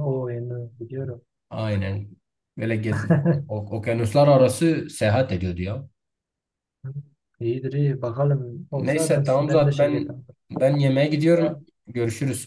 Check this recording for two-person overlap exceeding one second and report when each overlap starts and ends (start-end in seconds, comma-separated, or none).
8.7-10.2